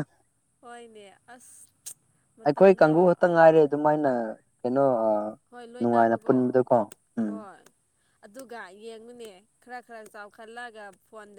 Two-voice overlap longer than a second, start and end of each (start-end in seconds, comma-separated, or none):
none